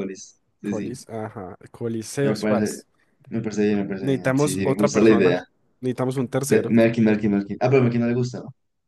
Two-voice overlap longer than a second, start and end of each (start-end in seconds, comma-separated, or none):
4.0-5.4